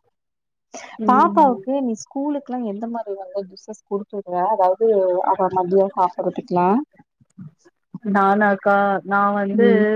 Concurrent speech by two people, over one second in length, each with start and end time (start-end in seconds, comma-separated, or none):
none